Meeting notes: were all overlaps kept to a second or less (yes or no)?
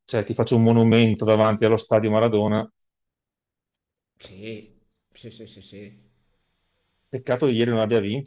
yes